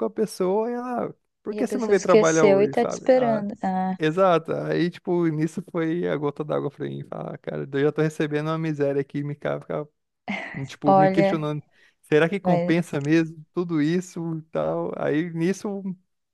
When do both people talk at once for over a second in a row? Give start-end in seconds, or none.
1.5-3.4